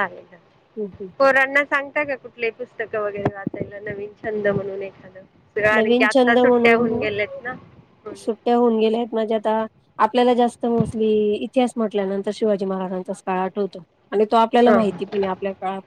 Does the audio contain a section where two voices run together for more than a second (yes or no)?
yes